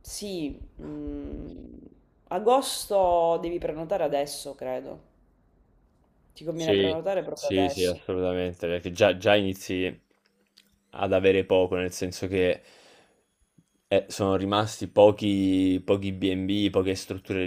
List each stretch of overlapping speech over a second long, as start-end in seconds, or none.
6.5-8.0